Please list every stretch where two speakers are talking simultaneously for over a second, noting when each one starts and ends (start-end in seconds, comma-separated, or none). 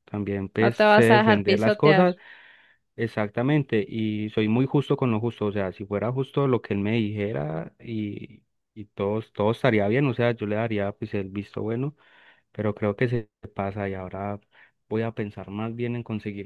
0.6-2.1